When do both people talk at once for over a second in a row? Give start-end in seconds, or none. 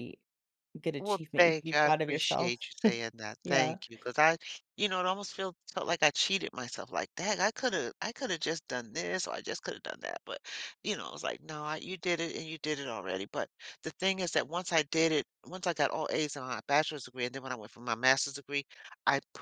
1.0-2.6